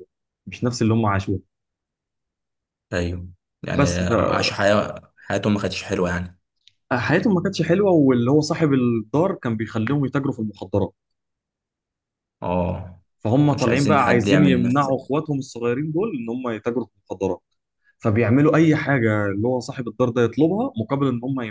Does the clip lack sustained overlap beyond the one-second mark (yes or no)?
no